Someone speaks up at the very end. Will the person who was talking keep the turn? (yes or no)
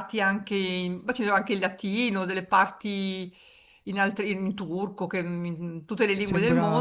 no